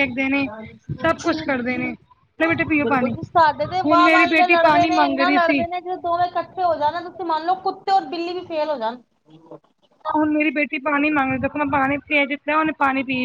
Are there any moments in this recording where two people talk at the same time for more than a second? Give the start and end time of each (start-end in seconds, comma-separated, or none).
3.8-5.6